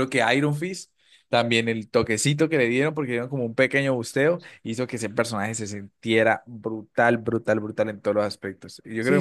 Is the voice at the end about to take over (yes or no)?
yes